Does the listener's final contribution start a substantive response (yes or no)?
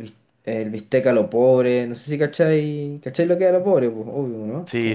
yes